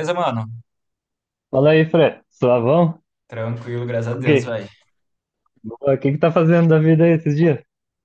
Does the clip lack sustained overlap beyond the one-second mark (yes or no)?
yes